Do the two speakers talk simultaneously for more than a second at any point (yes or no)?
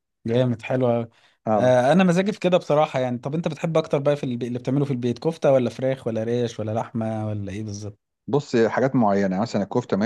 no